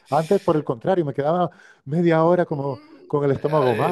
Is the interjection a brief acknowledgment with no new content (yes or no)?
no